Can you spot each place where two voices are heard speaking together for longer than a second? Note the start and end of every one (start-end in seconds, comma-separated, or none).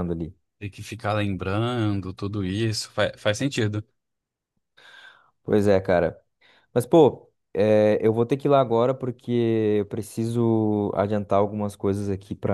none